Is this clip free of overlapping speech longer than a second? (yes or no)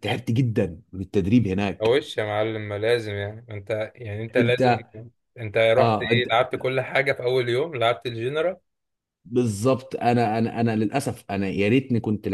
yes